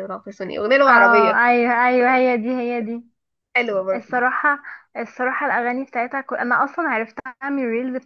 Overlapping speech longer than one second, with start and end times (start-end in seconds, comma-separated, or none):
none